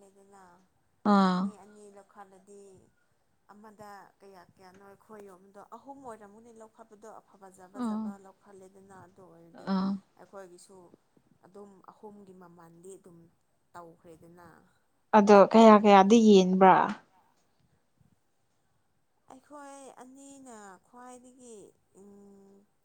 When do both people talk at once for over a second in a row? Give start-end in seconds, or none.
none